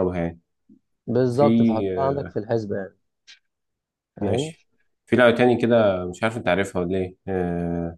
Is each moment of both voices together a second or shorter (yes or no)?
yes